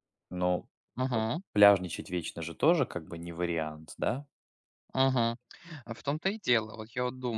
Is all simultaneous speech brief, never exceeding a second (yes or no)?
yes